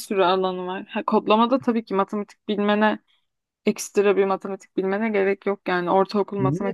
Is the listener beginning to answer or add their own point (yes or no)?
yes